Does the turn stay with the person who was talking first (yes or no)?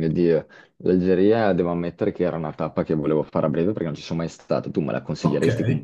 no